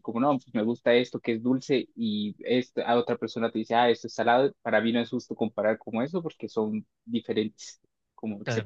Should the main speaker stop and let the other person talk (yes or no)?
no